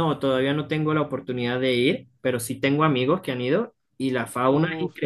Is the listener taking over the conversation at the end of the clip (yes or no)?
no